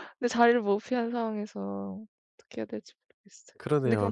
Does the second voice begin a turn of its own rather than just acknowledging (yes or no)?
yes